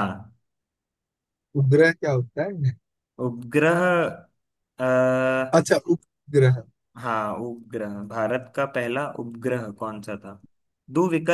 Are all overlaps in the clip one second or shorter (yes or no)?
yes